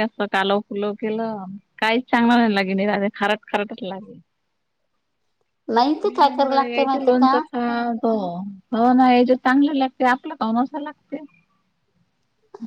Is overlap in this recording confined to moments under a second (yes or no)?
no